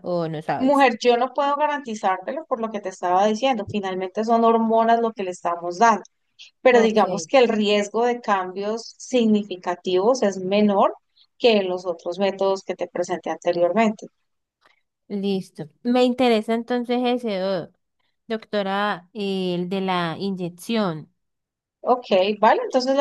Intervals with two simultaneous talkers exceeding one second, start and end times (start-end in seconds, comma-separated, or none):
none